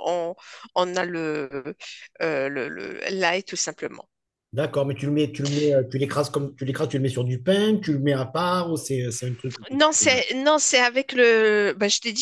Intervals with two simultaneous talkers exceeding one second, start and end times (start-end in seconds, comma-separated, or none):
none